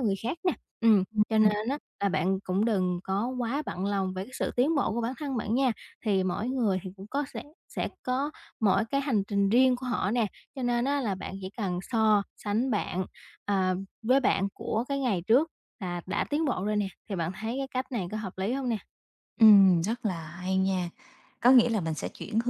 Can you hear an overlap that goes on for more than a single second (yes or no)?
no